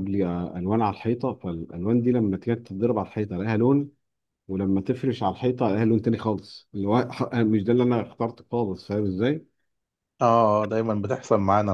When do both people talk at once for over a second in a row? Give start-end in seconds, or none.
none